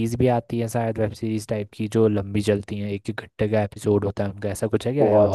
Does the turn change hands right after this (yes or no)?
yes